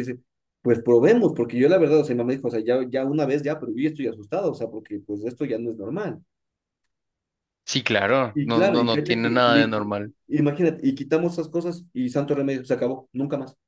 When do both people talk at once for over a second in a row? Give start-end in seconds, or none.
8.3-9.7